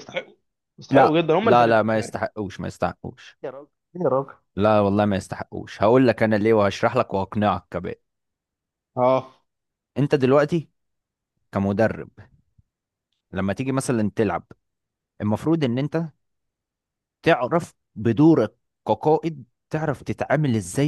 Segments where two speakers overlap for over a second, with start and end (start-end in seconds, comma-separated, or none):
0.9-2.2